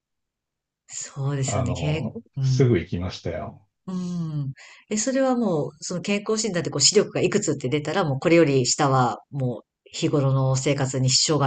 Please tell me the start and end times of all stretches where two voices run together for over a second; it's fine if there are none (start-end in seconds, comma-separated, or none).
1.4-2.8